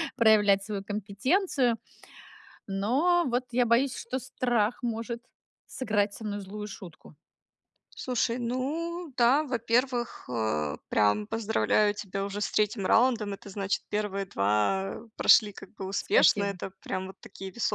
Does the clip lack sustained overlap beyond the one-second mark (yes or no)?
yes